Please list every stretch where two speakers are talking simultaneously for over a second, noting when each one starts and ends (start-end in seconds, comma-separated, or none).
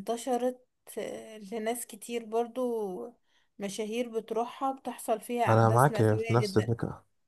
5.5-6.7